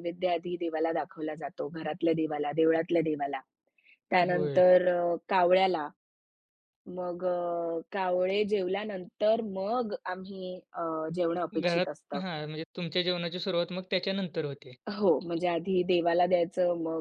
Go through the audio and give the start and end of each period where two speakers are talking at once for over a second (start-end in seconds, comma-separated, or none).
none